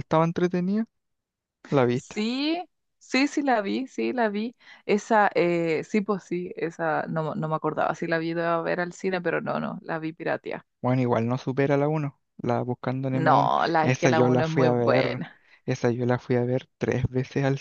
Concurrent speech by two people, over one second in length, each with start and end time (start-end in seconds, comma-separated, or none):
13.1-15.2